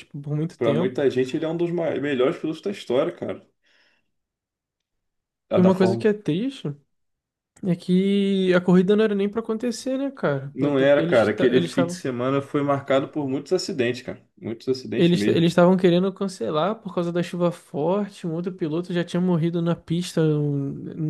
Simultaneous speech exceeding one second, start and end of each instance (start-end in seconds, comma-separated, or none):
10.5-12.0